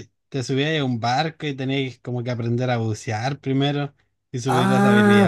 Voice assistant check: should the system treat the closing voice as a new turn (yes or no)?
yes